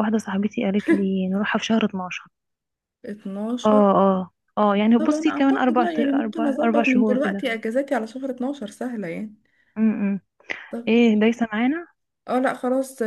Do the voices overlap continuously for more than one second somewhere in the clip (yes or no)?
yes